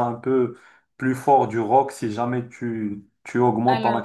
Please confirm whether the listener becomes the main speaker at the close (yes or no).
no